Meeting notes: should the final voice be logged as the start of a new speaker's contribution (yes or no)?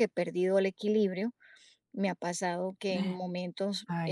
no